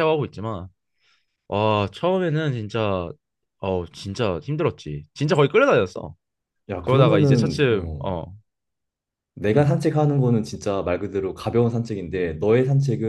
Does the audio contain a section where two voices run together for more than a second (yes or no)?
yes